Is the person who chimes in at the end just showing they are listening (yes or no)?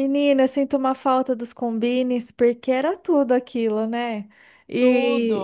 yes